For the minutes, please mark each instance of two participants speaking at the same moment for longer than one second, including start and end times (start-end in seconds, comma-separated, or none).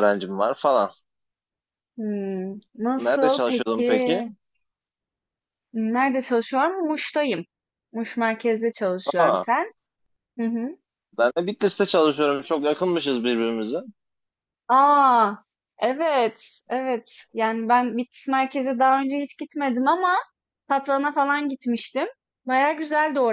3.0-4.2